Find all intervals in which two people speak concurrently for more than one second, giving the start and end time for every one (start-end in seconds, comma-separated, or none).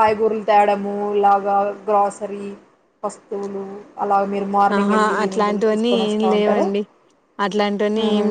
4.8-6.7